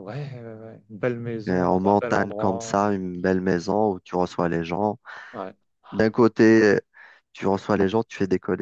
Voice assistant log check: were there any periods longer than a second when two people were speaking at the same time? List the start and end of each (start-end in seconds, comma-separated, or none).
1.5-2.9